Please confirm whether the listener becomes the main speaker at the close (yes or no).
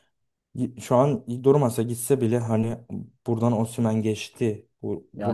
yes